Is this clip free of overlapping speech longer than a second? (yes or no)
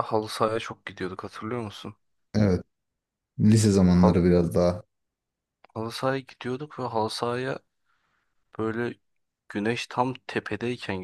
yes